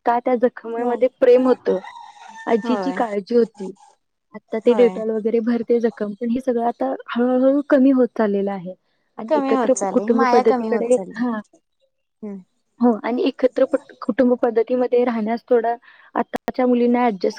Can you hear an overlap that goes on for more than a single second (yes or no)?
yes